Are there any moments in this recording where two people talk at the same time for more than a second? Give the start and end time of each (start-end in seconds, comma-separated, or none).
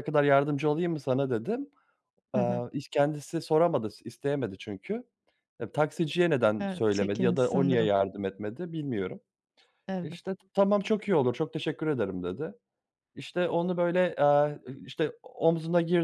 6.6-8.0